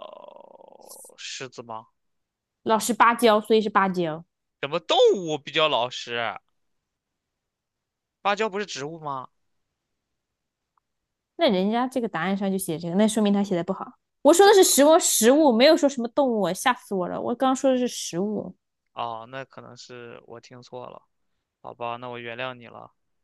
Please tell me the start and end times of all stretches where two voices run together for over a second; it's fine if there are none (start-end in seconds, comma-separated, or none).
none